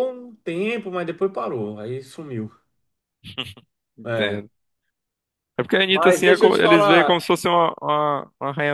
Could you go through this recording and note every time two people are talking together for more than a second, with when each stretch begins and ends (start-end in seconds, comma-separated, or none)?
5.9-7.2